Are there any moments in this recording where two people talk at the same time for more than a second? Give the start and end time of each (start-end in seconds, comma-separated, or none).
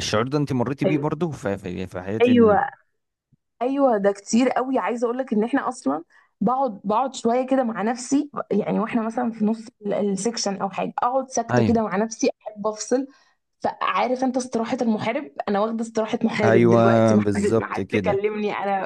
16.4-18.2